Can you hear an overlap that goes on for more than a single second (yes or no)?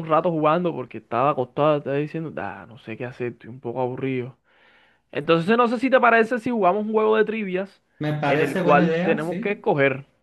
yes